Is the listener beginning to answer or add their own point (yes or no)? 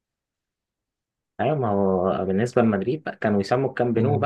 no